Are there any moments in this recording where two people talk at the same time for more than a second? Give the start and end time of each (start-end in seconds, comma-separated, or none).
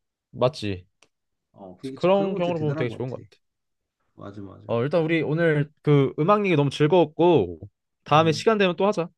1.8-3.2